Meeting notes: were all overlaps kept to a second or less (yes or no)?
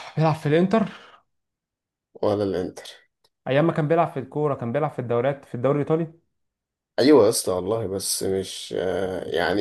yes